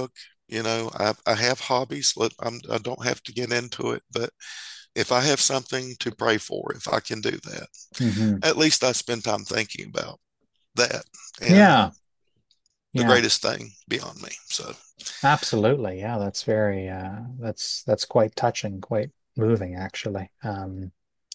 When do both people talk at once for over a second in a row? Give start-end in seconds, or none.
none